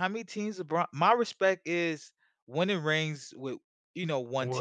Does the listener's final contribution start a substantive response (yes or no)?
yes